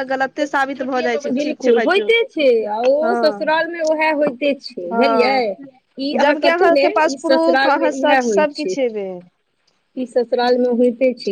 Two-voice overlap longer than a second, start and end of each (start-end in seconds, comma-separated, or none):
1.6-3.1, 6.2-8.8